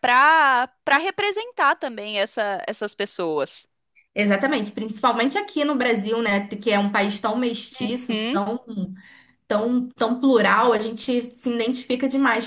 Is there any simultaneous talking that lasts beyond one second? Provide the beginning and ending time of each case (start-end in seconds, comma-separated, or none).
none